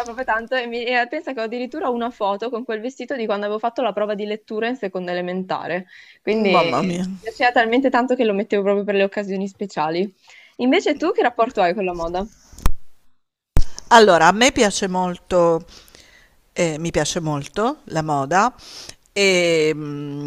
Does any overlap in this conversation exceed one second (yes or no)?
no